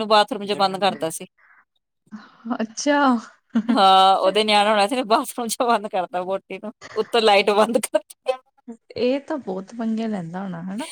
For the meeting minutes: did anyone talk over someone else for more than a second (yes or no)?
no